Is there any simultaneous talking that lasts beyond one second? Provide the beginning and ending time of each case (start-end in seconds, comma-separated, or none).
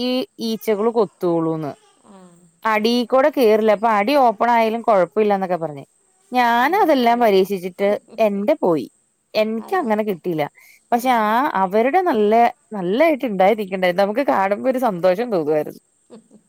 6.7-7.9